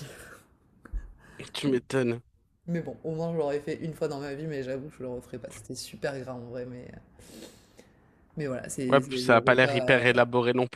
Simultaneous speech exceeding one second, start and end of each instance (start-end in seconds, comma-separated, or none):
8.9-10.2